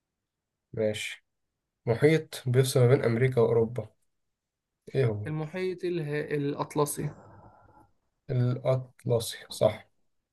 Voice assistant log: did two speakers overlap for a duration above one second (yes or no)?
no